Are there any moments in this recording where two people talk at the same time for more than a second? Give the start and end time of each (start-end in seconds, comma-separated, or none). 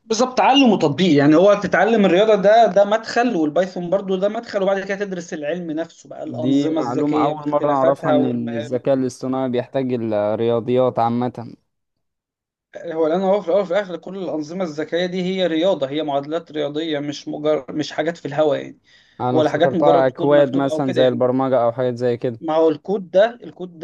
6.3-8.9, 19.3-21.2